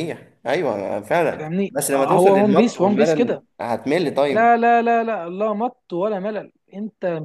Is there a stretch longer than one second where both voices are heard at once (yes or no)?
yes